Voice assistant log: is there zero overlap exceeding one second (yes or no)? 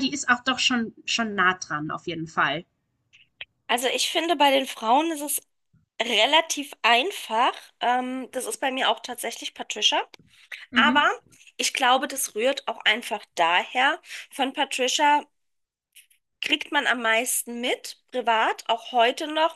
yes